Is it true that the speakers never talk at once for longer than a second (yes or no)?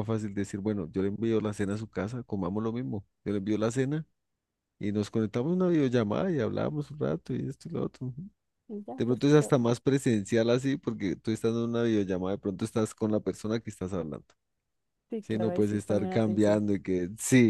no